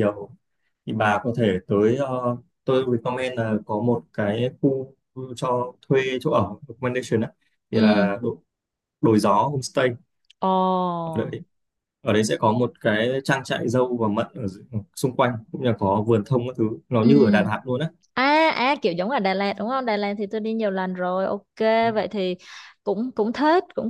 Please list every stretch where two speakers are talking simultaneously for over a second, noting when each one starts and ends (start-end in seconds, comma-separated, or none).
none